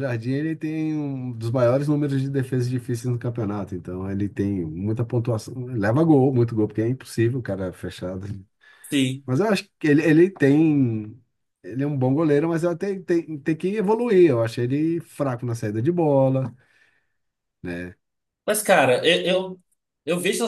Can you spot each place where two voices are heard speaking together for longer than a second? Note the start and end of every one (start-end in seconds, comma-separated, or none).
none